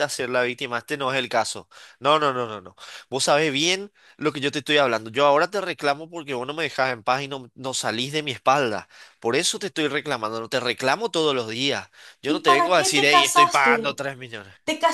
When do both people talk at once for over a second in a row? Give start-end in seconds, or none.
12.3-14.0